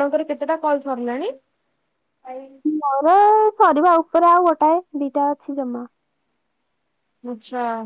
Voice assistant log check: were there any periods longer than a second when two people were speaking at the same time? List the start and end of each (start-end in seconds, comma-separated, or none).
none